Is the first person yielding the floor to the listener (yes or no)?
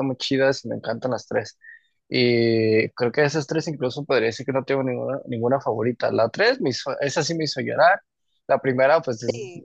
no